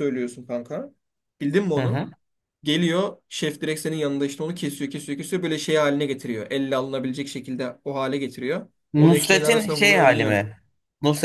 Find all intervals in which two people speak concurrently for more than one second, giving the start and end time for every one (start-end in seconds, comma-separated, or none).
8.9-10.5